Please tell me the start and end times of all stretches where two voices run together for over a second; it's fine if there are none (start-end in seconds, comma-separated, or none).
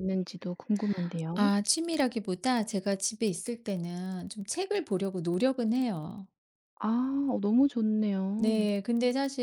none